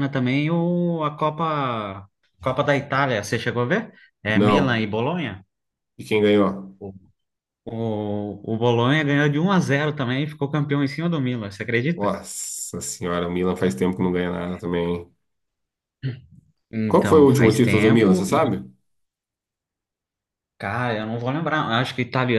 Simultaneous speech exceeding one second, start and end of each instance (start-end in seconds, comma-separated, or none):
16.9-18.4